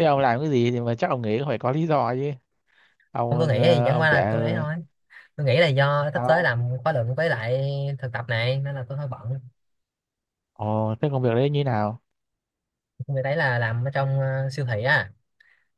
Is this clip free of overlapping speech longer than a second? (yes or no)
no